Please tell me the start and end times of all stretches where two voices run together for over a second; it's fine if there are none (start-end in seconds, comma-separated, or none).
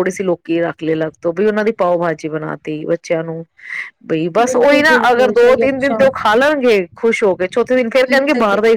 4.4-6.0